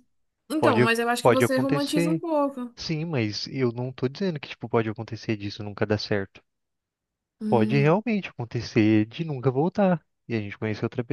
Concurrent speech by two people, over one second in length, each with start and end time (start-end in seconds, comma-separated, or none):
0.6-2.2